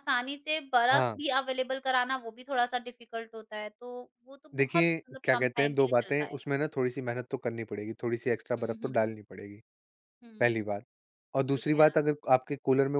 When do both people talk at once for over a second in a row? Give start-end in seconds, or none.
4.5-6.5